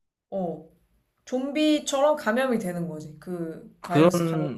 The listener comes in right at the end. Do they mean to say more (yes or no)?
yes